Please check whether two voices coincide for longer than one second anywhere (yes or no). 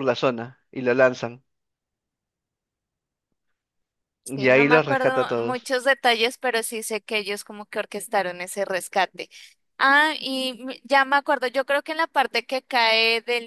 yes